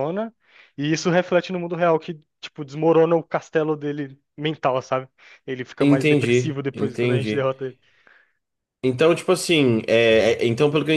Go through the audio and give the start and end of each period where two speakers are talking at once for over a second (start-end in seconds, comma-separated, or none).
5.8-7.5